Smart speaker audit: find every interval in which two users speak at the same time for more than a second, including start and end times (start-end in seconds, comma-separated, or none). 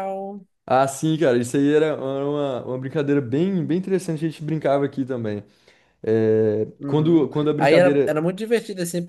6.8-8.2